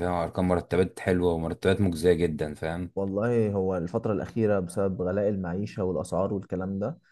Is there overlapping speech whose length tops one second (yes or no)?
no